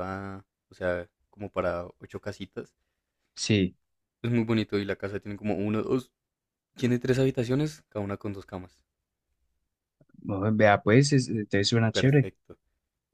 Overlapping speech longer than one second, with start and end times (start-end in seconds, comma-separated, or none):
none